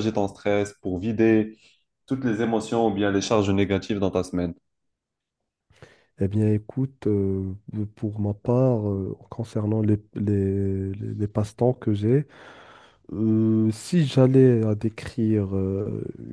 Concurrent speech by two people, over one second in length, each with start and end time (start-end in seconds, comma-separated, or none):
none